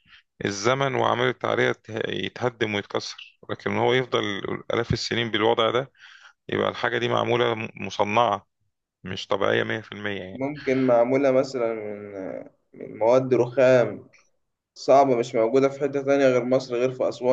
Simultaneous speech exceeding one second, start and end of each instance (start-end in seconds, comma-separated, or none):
none